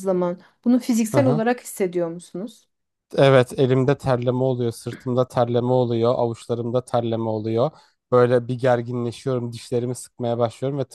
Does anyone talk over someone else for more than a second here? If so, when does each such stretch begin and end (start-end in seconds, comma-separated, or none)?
none